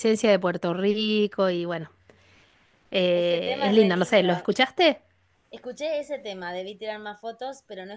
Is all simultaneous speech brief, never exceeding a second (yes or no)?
no